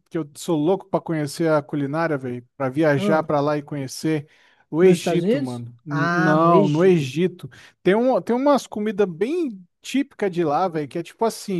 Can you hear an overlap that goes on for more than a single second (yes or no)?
yes